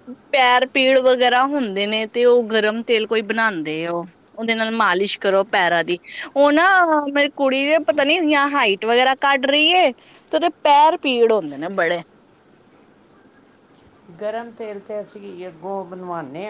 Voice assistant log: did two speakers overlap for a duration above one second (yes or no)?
no